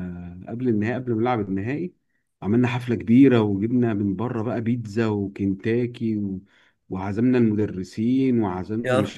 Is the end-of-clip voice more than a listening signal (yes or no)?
no